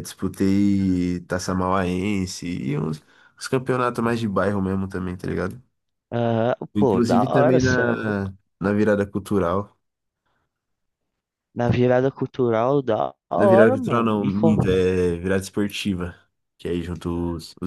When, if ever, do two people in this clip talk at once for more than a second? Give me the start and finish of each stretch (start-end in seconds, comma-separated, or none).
6.7-8.3, 13.3-14.6